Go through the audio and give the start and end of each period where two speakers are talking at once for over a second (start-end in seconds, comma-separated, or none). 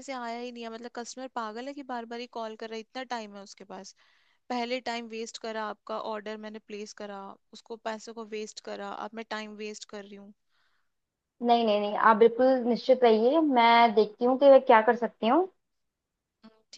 none